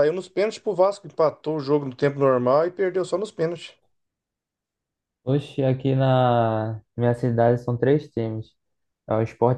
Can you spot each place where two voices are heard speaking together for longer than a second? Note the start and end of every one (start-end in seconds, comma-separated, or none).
none